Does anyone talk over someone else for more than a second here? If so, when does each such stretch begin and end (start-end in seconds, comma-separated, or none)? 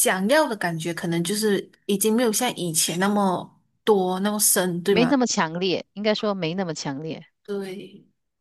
none